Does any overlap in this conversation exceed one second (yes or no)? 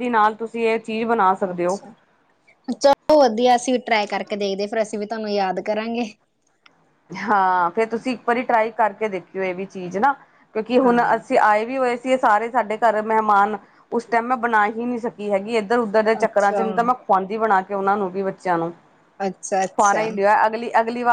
no